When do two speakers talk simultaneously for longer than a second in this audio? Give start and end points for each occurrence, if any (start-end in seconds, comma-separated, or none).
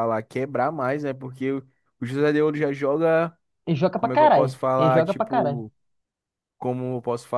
3.9-5.6